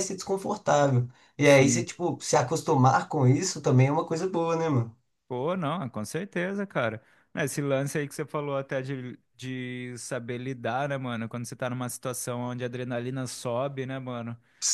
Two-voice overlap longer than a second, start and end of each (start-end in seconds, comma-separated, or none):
none